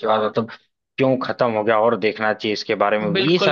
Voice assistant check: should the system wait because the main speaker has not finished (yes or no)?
no